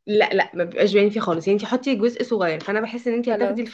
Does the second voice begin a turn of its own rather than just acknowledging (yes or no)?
no